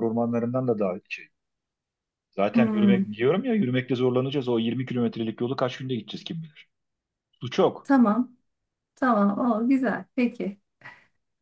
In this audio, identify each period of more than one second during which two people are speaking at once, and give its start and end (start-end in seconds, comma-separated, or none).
none